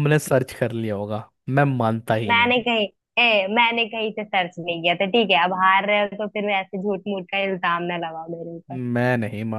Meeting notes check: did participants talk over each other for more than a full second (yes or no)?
no